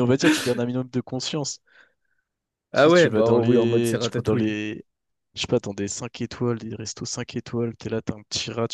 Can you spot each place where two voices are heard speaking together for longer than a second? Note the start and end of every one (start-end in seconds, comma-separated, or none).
2.7-4.6